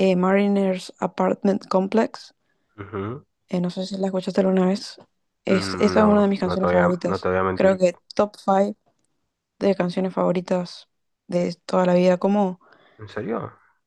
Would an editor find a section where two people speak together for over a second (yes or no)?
yes